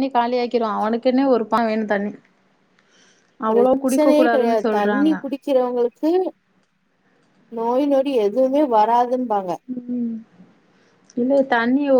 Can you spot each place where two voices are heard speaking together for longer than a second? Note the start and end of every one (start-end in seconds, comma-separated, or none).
3.5-5.1